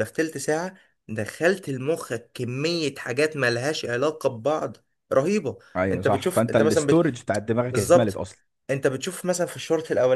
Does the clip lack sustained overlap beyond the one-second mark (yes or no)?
no